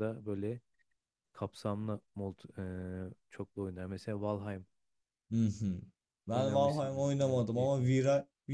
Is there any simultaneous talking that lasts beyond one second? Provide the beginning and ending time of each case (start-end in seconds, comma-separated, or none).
6.3-7.9